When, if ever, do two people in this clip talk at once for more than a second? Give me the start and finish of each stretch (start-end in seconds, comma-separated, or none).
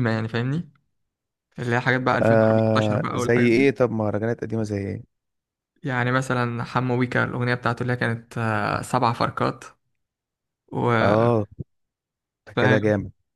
2.2-3.6